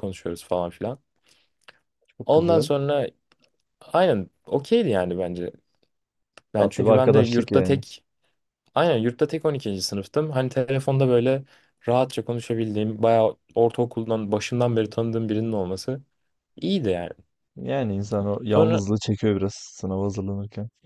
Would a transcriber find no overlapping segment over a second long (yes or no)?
no